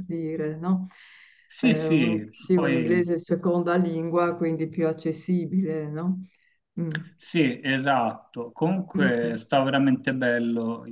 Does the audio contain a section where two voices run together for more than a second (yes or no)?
yes